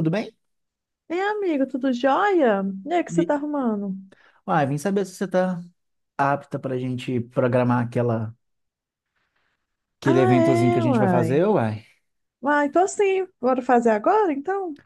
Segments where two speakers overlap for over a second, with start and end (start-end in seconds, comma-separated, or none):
10.1-11.4